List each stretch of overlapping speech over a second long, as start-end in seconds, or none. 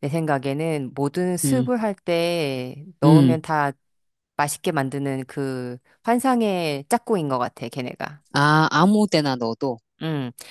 none